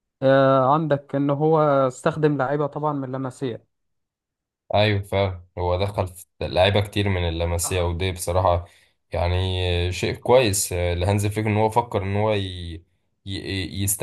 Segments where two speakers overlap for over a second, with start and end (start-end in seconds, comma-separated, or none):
none